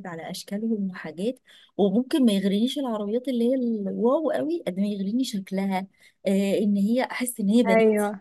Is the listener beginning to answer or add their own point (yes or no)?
no